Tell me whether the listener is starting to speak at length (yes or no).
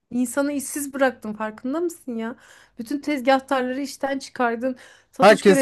yes